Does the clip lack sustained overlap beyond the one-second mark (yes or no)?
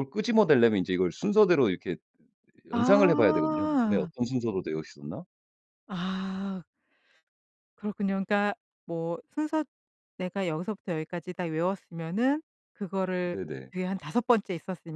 no